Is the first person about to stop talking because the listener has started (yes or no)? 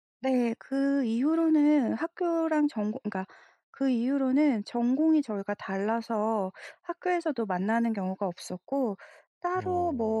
no